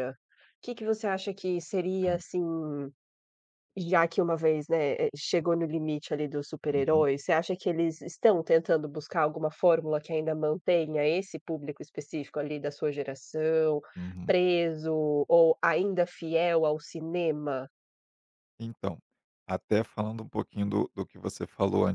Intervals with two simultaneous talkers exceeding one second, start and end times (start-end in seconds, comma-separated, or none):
none